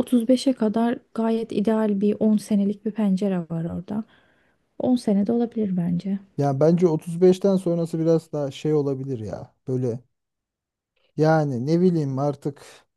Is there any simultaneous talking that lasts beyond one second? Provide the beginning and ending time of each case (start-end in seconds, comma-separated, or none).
none